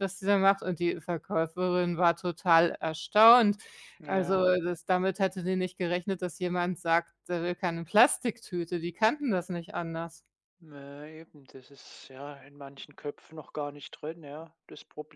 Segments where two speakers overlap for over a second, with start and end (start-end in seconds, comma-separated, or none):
none